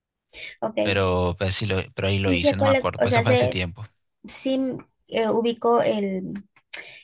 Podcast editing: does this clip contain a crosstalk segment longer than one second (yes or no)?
yes